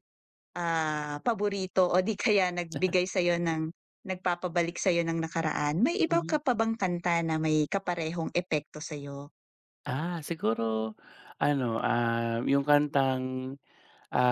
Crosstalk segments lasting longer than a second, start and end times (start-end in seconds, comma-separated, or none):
none